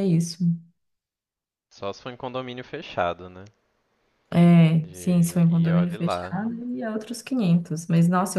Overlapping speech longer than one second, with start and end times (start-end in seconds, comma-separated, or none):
4.9-6.4